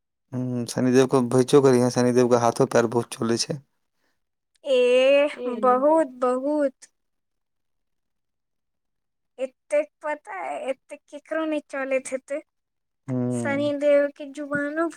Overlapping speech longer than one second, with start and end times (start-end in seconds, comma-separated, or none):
none